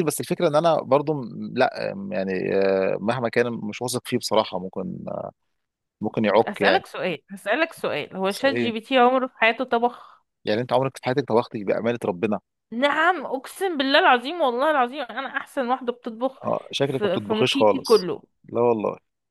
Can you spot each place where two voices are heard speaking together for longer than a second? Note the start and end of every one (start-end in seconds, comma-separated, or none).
16.8-18.1